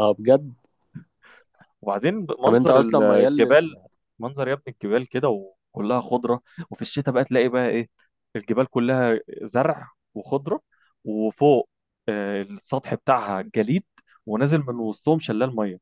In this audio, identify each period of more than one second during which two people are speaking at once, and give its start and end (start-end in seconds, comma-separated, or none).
2.5-3.8